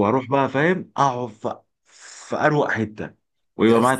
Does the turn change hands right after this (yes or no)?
no